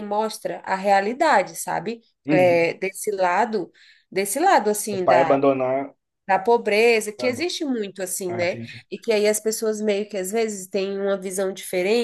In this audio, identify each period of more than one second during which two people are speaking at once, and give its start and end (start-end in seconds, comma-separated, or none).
none